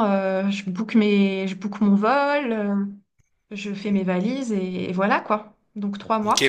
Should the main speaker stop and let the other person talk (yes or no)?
yes